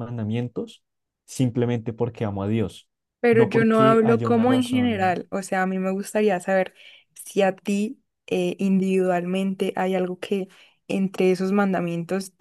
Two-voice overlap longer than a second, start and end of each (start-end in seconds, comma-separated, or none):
3.3-5.2